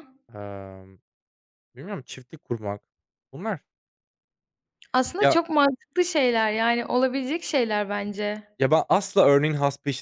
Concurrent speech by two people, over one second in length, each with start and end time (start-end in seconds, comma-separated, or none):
none